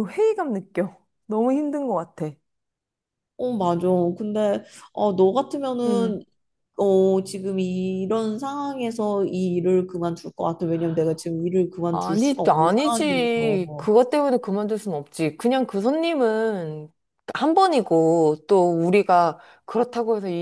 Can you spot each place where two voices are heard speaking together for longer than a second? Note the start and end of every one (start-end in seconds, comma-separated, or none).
11.9-13.9